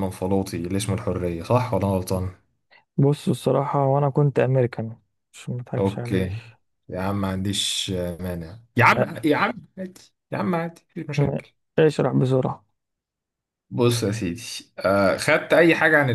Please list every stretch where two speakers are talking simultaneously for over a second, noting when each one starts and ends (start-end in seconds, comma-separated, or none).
none